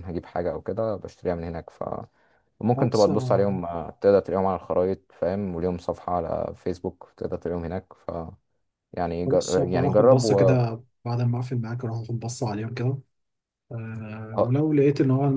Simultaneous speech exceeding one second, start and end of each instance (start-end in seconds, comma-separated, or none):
9.3-10.6